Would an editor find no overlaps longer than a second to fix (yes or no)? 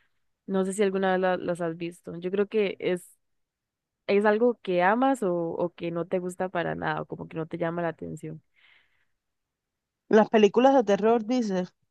yes